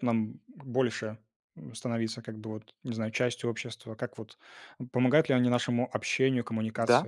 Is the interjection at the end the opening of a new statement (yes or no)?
yes